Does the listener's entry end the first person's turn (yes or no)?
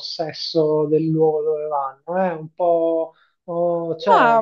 no